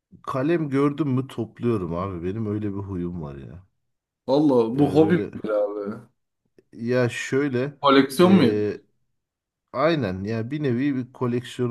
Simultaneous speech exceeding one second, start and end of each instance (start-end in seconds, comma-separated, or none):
none